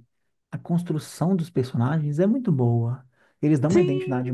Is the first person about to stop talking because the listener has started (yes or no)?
no